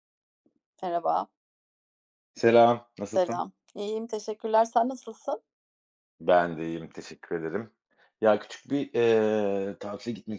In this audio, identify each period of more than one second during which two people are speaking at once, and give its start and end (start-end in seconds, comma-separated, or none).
none